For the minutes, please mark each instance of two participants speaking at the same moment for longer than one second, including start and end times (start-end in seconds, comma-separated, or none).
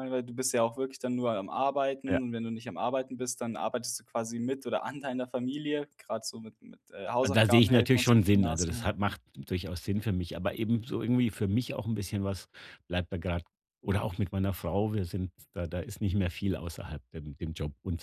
7.2-8.9